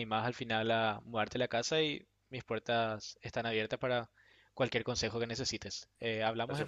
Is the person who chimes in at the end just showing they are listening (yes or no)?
no